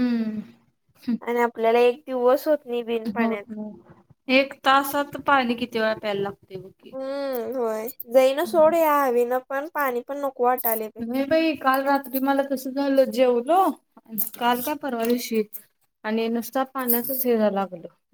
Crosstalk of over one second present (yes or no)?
no